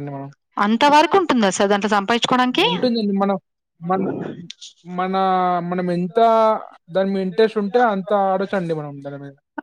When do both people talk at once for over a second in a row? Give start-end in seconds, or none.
none